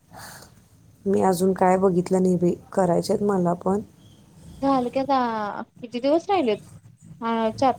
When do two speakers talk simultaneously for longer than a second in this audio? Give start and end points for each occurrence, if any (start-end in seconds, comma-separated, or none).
none